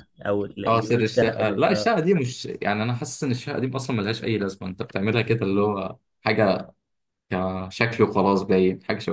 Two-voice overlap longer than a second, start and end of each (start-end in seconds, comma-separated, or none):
0.7-1.9